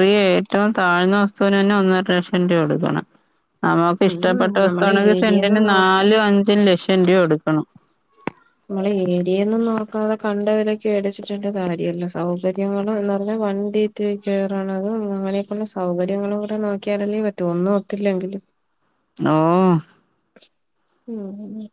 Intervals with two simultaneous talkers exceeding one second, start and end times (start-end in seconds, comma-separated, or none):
4.1-5.9